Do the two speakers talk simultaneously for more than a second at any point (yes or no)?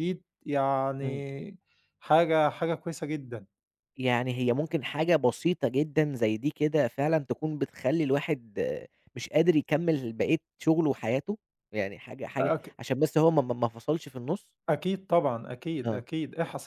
no